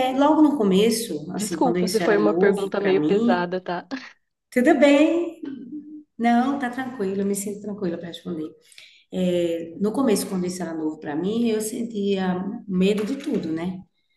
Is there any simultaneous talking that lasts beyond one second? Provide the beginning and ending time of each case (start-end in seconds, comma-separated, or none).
1.4-3.5